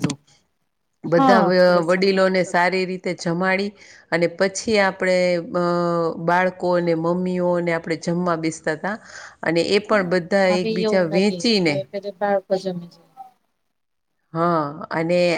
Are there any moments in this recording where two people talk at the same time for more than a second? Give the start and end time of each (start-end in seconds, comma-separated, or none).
1.1-2.6